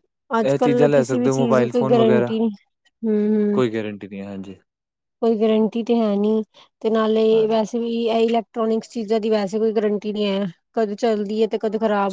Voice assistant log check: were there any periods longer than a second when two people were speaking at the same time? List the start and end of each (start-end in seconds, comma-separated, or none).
0.5-2.3